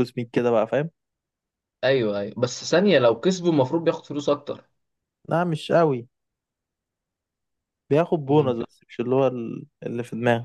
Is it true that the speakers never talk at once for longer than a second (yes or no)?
yes